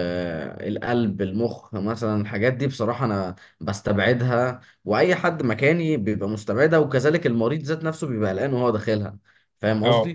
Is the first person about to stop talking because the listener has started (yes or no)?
no